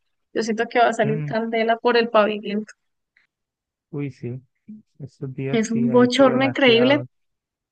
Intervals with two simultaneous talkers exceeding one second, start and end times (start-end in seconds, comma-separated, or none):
5.5-7.0